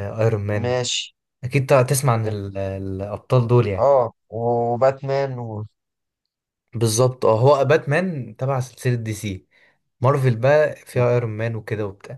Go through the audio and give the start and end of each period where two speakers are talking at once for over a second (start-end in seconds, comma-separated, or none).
none